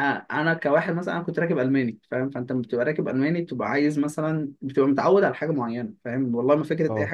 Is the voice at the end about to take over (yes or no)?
no